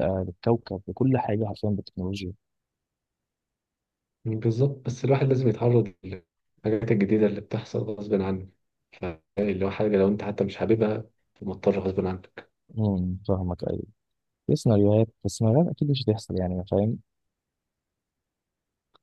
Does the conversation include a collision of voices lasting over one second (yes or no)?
no